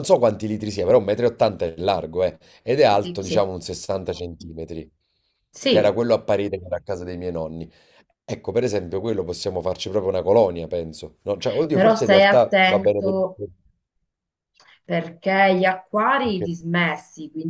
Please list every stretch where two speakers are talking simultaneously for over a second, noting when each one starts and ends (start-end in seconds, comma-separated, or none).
11.7-13.2